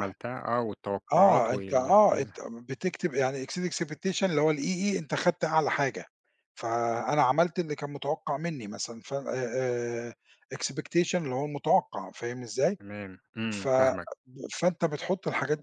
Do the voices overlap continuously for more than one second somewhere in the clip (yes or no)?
yes